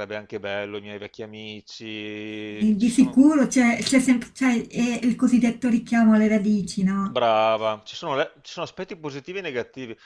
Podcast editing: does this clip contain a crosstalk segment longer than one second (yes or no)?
no